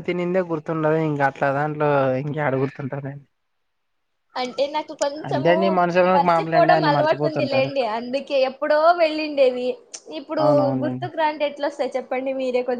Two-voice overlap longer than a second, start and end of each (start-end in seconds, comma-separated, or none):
6.1-7.7